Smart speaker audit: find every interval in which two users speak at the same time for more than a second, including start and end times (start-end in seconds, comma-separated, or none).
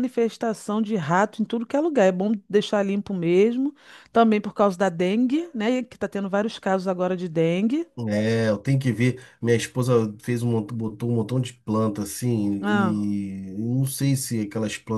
none